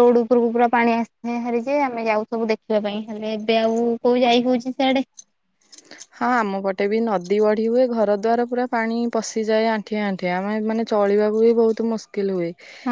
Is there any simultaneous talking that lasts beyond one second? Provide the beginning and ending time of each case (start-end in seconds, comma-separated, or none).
none